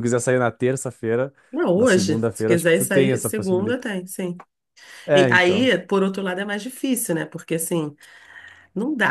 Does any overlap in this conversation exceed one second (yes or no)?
yes